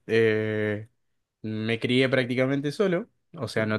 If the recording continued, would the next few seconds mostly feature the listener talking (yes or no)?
no